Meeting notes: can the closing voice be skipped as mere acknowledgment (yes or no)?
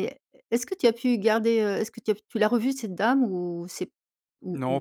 no